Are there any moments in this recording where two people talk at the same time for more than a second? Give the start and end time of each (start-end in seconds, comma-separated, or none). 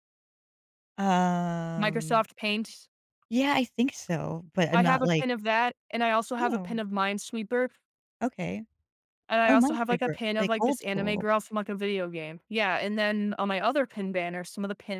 9.5-11.2